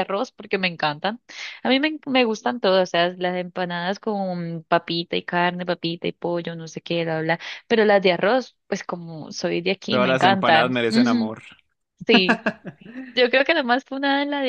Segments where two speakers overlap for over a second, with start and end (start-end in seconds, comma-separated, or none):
9.9-11.3